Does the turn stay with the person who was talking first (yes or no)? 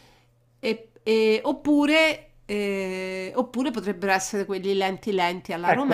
no